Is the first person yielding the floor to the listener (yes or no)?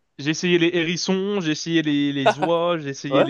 no